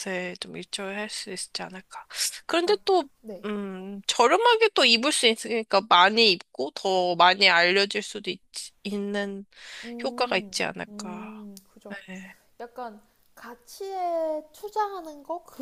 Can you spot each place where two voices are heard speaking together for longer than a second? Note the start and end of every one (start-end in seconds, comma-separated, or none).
10.0-11.5